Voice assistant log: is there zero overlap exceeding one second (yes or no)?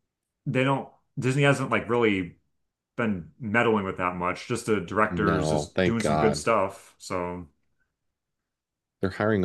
no